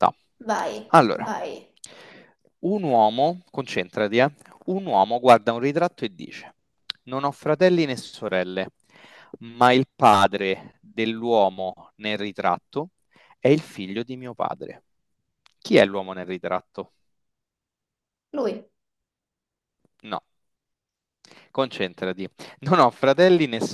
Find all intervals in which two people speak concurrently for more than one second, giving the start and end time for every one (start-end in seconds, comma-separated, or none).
none